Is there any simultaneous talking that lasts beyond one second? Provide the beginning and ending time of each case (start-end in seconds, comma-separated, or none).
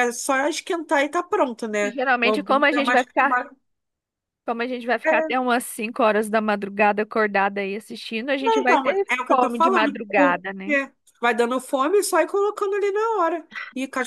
1.9-3.4, 8.4-10.8